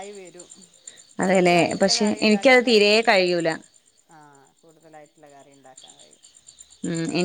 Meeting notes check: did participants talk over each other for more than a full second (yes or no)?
yes